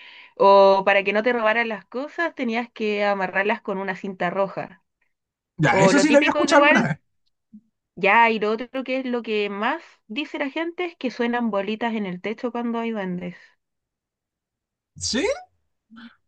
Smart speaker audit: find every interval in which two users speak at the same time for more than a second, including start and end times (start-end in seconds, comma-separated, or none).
5.7-7.0